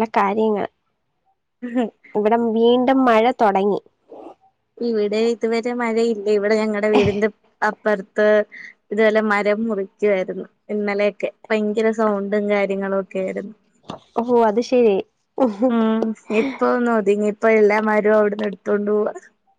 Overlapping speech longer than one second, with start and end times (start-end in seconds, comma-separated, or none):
none